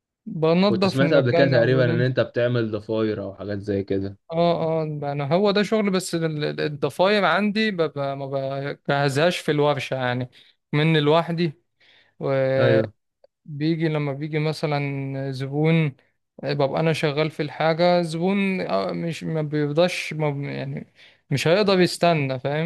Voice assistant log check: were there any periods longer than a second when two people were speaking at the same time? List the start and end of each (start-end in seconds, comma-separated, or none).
0.7-2.1